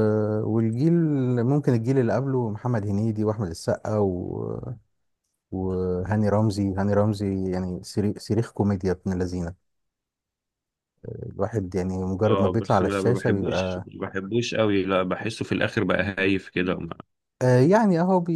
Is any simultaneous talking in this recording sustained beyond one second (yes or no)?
yes